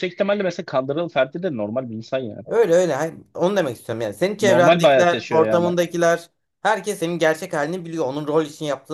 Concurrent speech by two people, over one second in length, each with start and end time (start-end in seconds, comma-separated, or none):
4.4-5.7